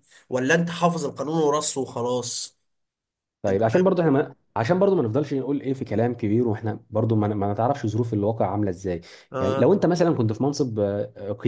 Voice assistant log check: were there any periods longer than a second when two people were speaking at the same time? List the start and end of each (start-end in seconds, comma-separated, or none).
none